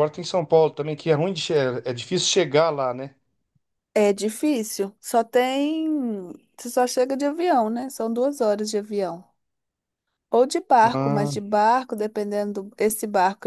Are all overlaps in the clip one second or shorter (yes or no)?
yes